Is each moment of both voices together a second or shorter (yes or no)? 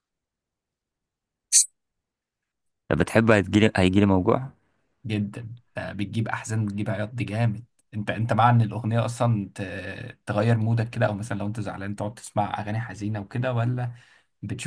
yes